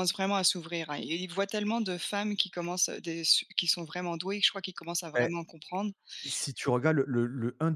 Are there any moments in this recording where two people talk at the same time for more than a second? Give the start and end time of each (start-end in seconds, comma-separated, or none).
none